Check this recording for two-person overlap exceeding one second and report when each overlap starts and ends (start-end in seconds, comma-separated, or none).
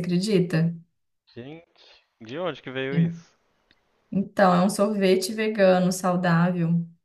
none